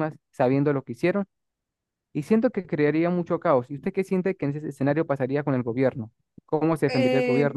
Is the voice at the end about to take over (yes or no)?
yes